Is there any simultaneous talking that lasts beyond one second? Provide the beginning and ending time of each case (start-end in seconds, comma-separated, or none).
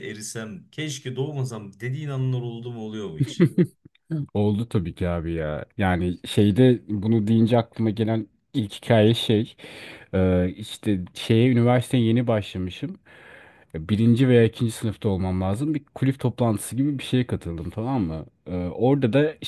none